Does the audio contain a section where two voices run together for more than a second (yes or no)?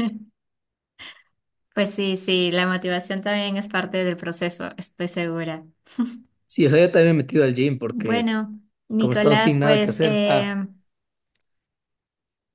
yes